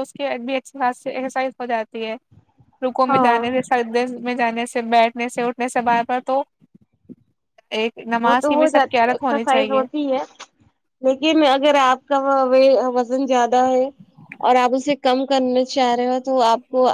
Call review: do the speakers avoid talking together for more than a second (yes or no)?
no